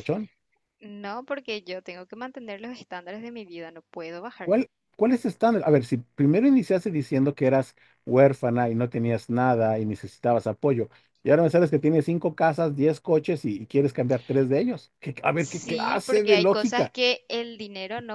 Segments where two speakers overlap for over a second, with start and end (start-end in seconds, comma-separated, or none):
15.4-16.9